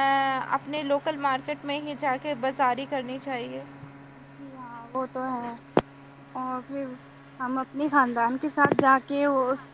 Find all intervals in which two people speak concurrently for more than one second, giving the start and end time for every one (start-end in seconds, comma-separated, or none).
none